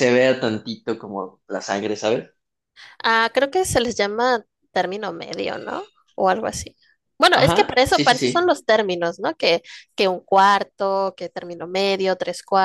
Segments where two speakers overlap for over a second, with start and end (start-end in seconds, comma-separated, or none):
7.3-8.6